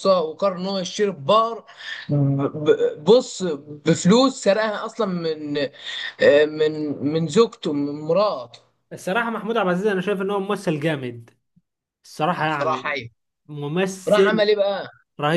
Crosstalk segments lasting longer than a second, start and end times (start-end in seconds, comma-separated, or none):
none